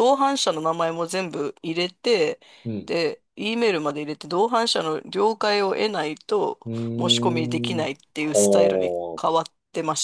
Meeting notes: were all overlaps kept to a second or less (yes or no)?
no